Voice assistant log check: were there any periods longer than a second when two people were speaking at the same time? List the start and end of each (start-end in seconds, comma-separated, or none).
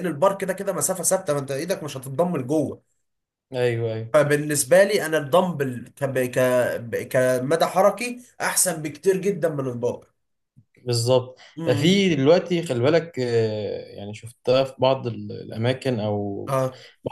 none